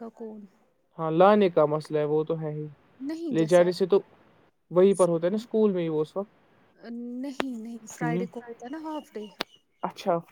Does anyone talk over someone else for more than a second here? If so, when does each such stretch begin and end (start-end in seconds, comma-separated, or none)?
none